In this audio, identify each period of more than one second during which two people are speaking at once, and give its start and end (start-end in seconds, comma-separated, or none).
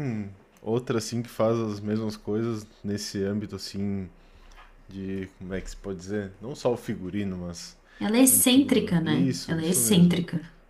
8.3-10.2